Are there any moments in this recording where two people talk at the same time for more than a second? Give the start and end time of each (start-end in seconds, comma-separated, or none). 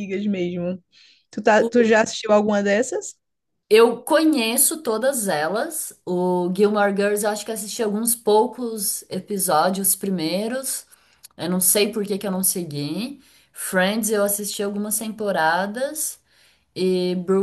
none